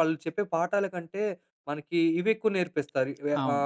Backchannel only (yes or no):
yes